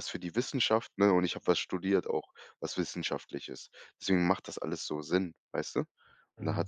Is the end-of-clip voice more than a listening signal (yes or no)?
yes